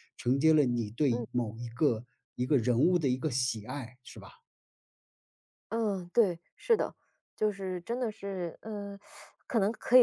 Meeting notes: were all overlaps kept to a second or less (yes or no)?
yes